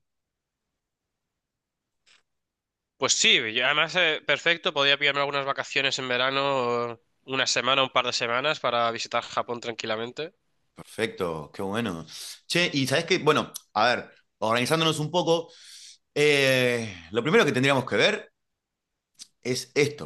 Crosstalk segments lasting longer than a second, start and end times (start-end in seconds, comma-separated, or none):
none